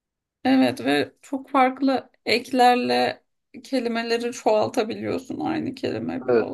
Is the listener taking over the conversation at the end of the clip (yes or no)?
yes